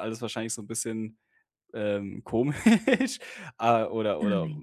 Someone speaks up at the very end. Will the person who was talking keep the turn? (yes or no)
yes